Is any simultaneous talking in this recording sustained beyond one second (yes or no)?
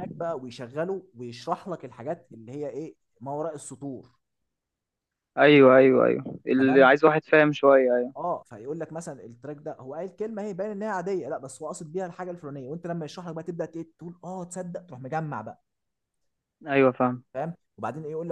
no